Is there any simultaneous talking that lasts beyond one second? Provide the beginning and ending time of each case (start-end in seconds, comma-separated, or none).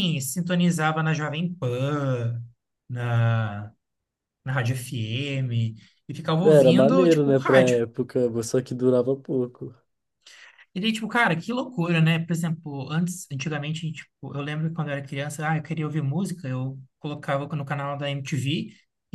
6.4-7.8